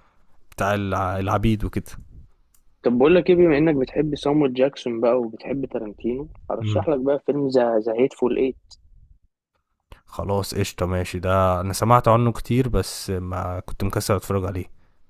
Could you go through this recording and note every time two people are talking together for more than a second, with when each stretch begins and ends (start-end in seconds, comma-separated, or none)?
none